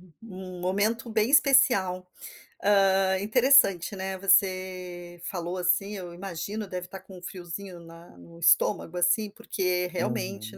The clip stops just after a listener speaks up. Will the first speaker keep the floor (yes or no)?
yes